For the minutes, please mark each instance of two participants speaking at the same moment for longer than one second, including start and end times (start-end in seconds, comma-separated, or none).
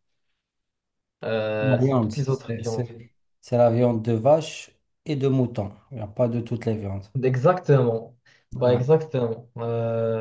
1.6-3.0